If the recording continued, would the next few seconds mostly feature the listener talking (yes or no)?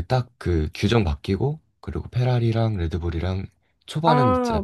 yes